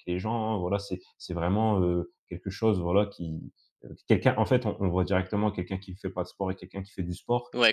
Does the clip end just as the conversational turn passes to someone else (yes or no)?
no